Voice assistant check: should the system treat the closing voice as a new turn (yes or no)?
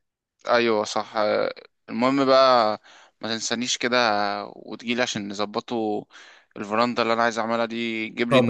yes